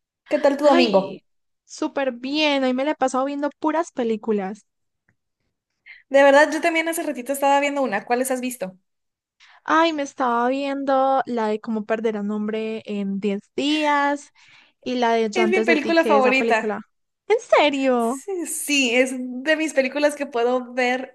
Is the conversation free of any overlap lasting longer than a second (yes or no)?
no